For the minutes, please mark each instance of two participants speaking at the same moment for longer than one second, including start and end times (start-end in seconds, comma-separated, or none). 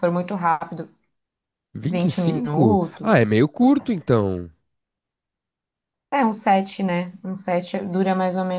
1.9-3.4